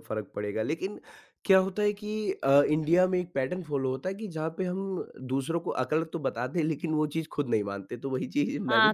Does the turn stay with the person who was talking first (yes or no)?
no